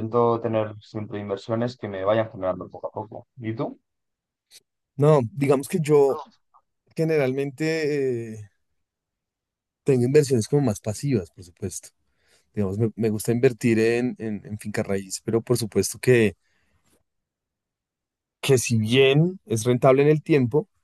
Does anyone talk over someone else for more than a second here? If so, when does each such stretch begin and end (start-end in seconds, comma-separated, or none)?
none